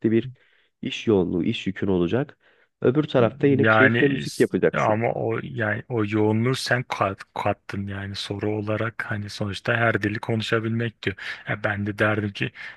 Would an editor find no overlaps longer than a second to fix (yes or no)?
no